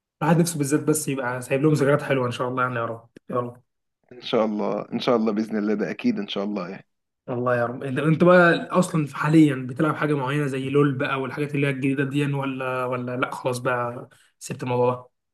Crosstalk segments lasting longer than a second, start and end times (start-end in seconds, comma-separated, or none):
none